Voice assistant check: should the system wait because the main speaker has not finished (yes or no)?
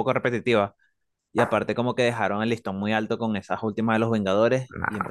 yes